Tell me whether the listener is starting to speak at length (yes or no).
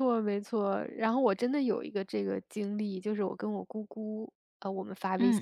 no